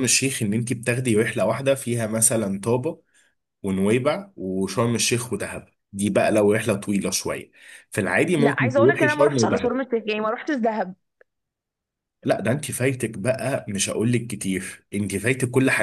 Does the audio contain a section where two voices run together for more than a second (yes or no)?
yes